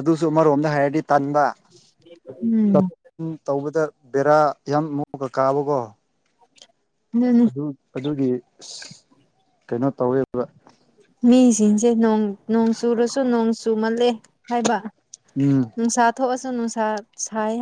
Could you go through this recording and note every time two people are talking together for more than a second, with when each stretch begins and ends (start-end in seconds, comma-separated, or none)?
none